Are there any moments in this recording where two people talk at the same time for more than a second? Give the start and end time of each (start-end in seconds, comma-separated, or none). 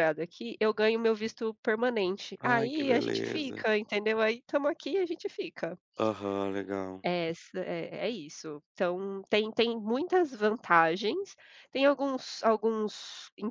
2.4-3.7